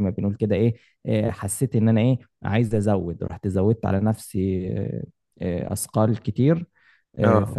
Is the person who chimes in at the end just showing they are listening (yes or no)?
yes